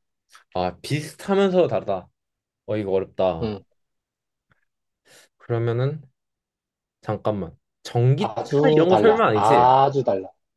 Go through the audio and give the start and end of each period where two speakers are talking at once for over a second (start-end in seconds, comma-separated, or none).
8.2-9.8